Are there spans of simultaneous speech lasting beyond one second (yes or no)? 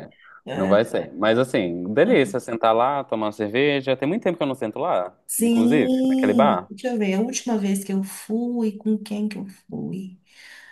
yes